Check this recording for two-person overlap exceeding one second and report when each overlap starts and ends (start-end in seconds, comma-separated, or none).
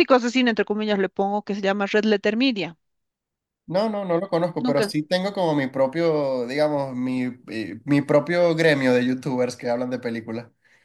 none